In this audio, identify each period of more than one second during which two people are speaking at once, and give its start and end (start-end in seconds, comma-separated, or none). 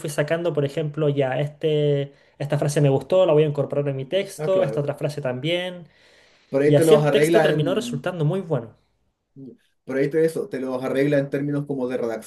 6.7-8.1